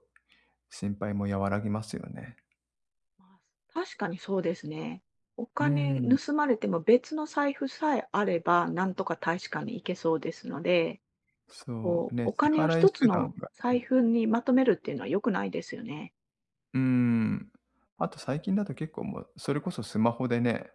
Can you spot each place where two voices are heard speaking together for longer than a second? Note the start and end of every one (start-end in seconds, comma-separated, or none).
11.7-13.8